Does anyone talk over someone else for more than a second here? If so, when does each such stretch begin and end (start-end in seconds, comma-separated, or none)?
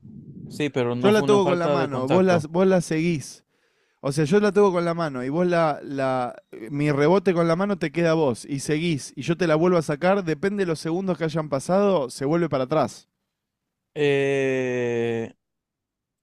1.0-2.5